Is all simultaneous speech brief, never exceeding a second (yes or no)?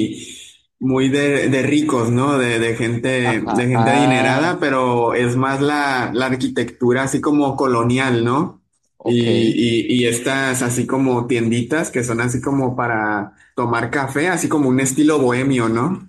no